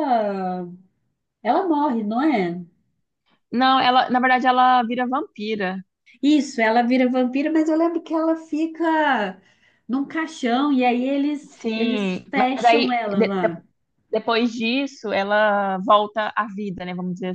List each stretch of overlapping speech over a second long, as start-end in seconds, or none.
11.5-13.6